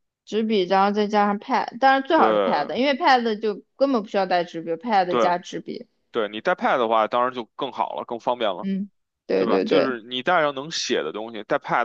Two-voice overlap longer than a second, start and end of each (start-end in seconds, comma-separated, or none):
none